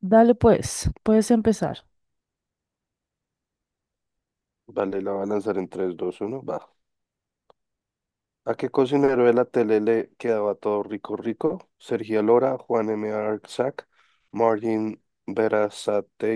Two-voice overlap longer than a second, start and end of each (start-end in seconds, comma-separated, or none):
none